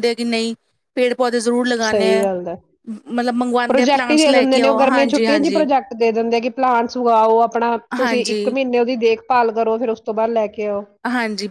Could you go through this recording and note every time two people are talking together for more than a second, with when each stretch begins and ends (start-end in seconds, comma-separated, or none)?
3.7-5.6